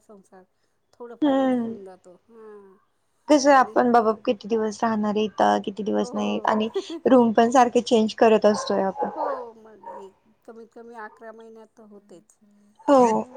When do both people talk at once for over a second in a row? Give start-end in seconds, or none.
none